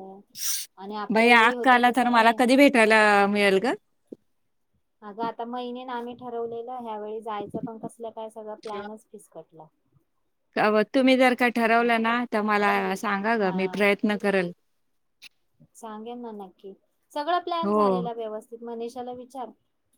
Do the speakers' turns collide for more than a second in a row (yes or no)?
no